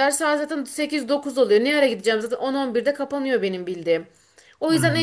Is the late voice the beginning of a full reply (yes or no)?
no